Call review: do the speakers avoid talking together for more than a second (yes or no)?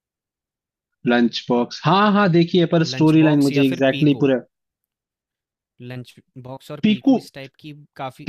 no